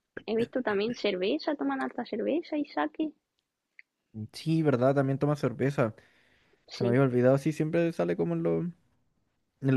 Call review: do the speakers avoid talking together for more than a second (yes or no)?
yes